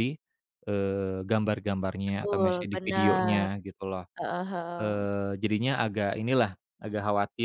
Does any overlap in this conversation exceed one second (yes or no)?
yes